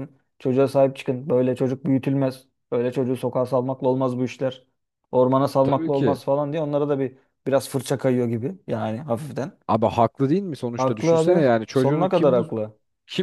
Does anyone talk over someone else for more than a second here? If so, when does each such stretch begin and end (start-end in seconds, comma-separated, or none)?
10.8-12.5